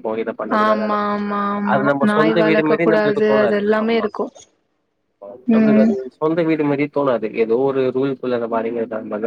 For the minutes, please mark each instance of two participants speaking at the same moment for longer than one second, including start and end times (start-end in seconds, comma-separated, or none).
1.7-4.1